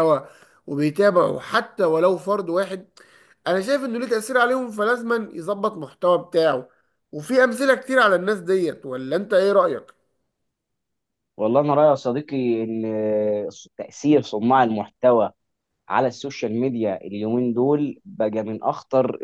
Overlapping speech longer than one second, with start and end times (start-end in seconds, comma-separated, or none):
none